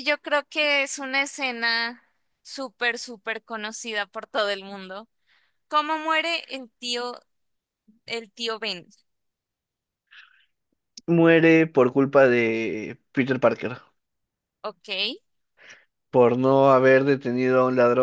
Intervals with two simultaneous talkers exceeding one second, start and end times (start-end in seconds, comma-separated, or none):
none